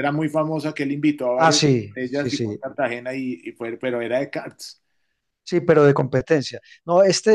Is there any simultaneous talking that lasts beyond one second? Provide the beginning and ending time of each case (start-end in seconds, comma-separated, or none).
1.4-2.6